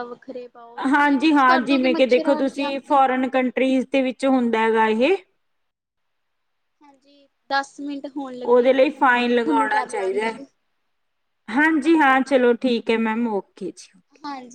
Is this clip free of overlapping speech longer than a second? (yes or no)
no